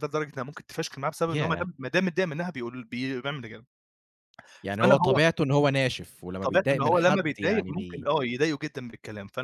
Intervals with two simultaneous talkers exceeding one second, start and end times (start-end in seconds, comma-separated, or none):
6.4-8.1